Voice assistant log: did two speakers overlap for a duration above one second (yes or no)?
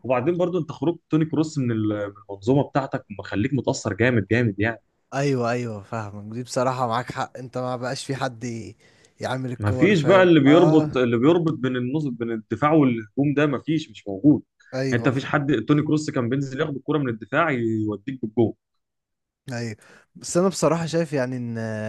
yes